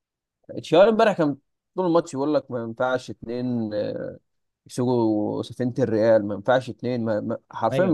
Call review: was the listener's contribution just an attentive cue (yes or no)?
yes